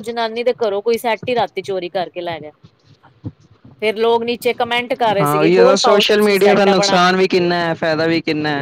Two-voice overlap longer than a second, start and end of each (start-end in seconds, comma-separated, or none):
5.2-7.0